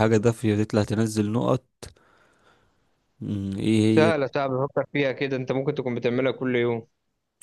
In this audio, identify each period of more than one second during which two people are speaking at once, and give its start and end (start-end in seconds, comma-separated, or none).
none